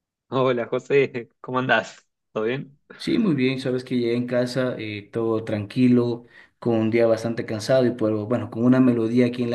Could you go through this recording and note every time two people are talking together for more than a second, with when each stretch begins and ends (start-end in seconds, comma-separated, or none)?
none